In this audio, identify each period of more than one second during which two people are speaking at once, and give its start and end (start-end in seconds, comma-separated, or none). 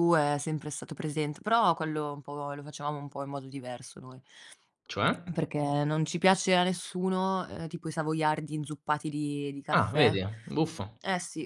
none